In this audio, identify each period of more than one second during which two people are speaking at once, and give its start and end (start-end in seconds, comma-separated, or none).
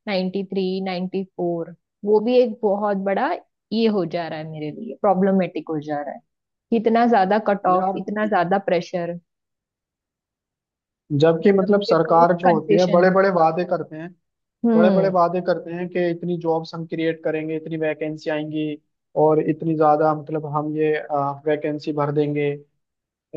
11.5-13.1